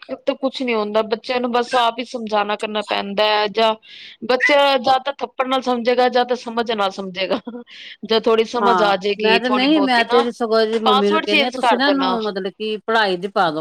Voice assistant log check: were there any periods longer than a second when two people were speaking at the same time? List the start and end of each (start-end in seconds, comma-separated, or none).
8.6-10.2, 10.8-12.2